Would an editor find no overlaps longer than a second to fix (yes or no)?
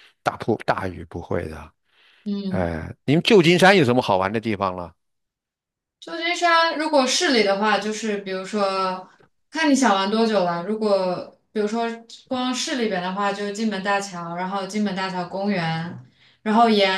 yes